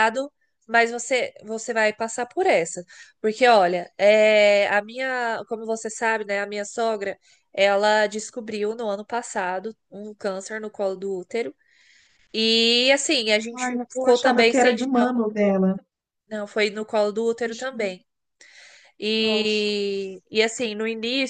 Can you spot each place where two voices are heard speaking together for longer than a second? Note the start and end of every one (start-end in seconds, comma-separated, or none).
13.5-15.1